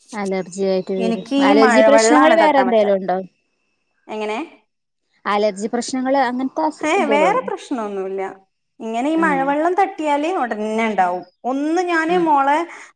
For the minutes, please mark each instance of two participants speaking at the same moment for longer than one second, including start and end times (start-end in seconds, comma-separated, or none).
1.5-2.9